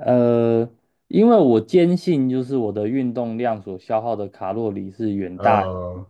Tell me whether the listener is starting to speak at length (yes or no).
no